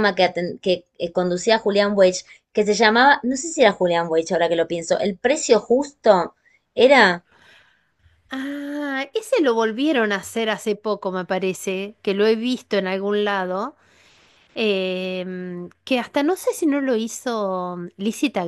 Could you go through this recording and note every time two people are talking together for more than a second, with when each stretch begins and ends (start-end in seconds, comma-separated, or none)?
none